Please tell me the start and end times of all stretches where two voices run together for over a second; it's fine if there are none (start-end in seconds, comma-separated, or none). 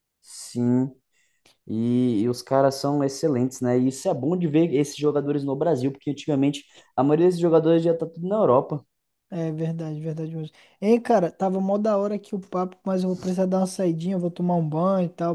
none